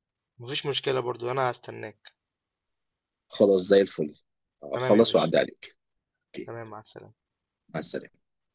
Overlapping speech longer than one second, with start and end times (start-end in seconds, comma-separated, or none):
none